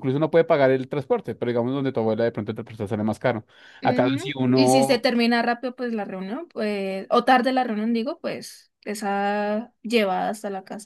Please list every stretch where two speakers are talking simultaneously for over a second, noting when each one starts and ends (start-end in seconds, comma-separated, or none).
3.8-5.1